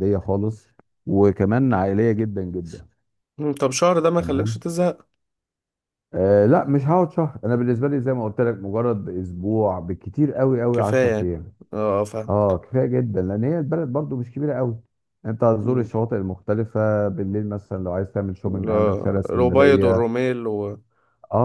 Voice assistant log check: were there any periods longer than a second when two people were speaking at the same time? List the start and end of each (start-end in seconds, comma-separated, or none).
18.4-20.1